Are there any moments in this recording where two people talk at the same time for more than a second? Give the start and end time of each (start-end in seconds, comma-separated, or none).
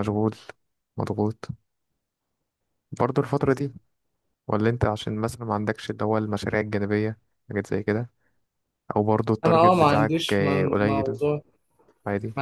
9.4-11.2